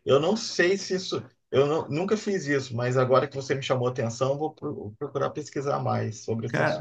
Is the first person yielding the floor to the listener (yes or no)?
yes